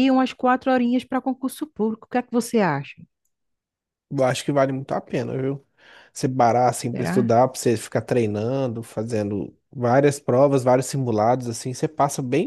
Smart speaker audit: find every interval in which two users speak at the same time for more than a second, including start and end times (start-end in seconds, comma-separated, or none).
none